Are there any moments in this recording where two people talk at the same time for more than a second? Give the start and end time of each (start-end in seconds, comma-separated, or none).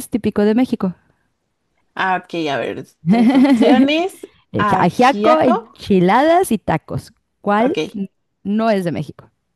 4.5-5.8